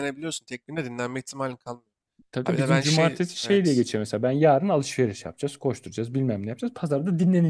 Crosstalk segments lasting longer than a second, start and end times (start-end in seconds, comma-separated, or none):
2.5-3.8